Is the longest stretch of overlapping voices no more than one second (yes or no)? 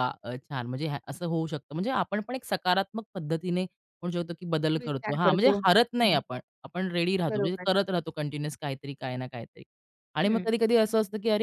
no